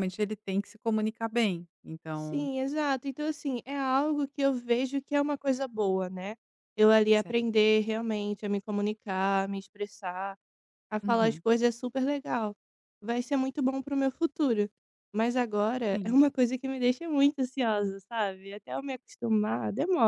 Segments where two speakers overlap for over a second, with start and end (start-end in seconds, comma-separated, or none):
none